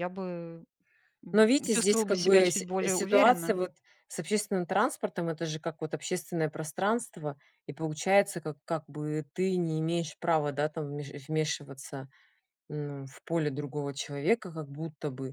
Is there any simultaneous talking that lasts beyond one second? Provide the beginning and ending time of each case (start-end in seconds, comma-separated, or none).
1.3-3.6